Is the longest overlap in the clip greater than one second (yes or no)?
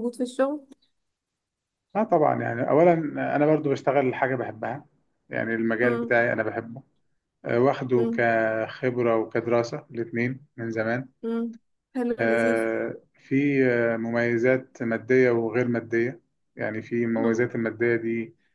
no